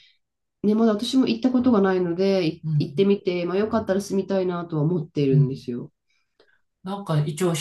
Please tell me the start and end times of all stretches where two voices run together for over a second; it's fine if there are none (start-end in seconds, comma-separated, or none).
none